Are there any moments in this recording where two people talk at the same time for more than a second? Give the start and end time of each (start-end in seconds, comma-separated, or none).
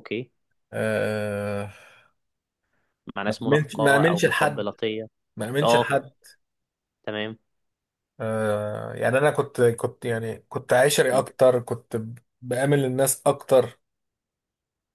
3.3-4.7